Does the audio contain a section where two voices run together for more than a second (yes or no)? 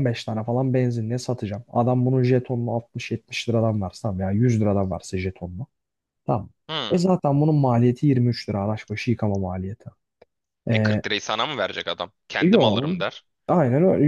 no